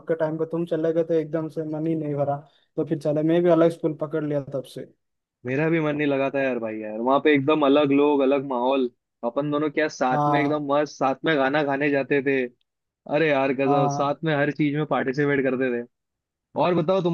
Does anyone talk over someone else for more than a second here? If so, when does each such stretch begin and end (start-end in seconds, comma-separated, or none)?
none